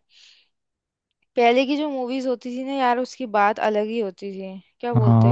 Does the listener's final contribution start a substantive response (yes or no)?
yes